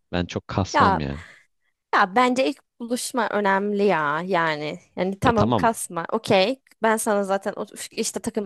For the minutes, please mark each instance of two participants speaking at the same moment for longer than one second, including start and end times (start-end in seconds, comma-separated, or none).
none